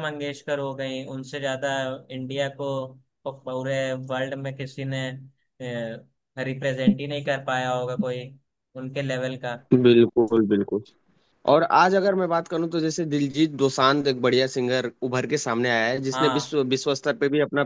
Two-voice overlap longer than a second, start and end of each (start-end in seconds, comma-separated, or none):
none